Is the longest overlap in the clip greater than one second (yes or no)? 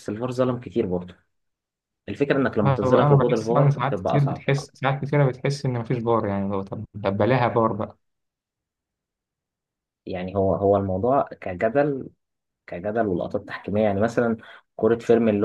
yes